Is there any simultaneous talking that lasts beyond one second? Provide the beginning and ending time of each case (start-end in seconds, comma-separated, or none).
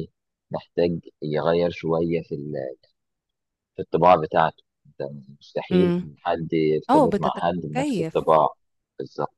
6.9-8.4